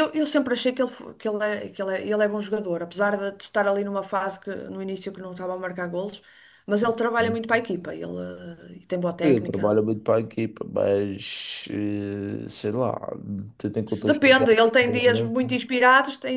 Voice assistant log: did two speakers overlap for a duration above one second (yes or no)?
yes